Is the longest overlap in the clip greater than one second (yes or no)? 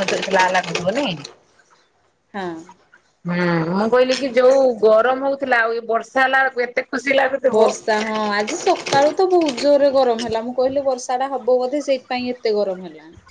no